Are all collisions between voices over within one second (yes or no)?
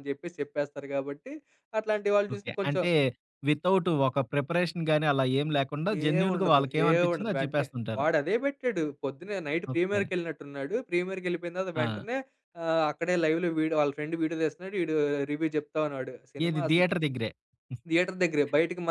no